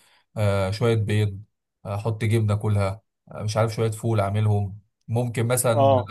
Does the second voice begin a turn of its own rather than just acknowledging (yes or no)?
no